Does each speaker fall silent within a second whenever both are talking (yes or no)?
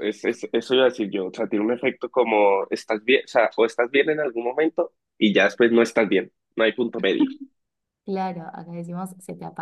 yes